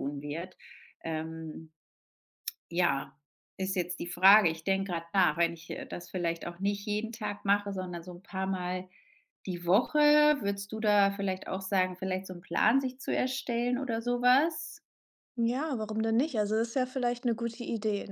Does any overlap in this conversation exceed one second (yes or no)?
no